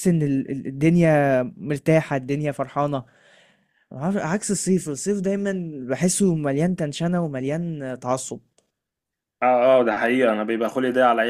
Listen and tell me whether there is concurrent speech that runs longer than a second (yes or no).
no